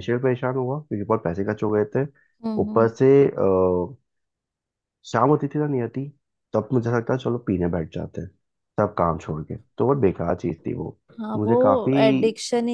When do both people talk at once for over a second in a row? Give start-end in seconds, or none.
none